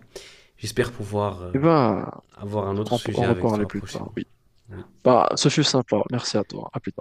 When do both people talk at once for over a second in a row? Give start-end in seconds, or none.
2.9-4.2